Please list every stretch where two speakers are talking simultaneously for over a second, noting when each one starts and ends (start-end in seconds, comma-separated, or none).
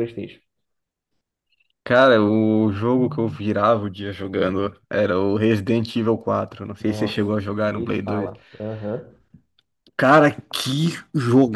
6.8-8.3